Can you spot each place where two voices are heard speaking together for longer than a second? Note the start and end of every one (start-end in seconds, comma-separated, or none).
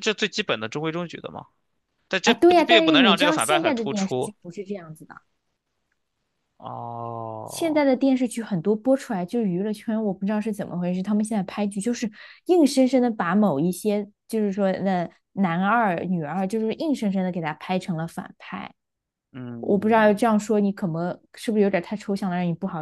2.2-4.3